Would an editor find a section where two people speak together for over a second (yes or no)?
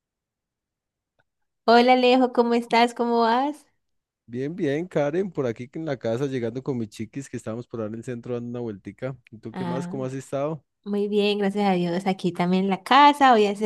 no